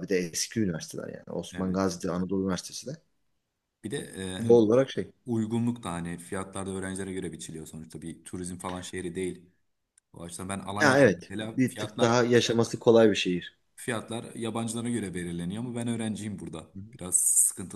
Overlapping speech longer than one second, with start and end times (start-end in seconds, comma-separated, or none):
10.8-12.2